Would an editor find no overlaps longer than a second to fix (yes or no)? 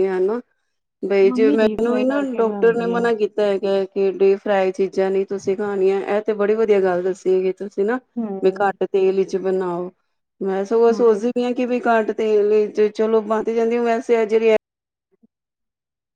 no